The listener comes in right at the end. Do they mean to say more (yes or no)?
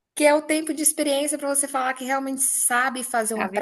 no